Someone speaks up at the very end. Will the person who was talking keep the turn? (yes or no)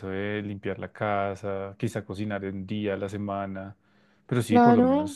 no